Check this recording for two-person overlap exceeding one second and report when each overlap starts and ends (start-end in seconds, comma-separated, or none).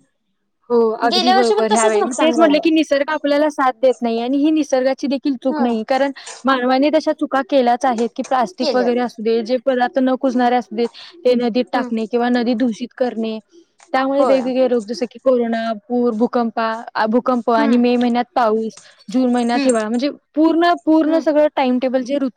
1.1-2.6